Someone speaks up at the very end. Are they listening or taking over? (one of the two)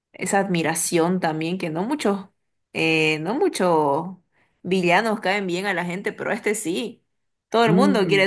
taking over